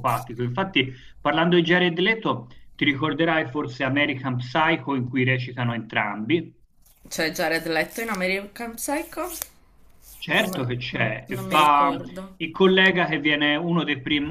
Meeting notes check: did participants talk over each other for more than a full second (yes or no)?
yes